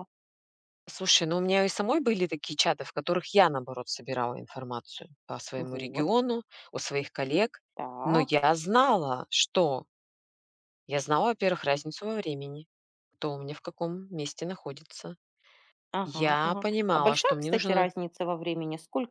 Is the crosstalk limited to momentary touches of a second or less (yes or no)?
no